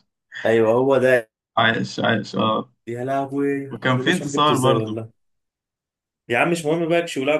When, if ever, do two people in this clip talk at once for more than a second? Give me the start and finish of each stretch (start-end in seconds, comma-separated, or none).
3.7-5.0